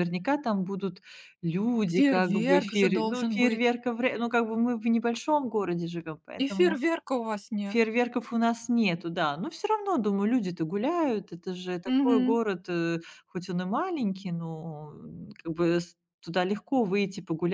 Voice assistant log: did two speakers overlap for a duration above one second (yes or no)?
yes